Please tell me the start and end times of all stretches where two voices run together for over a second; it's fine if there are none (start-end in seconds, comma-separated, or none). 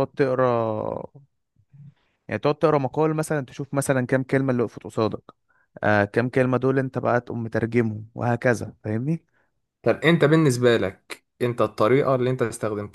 none